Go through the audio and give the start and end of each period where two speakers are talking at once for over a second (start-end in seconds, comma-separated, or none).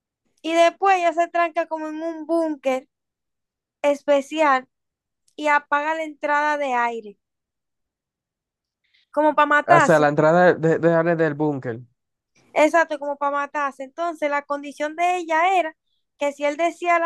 none